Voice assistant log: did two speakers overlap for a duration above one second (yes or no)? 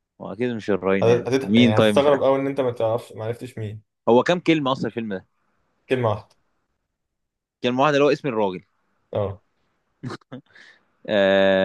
yes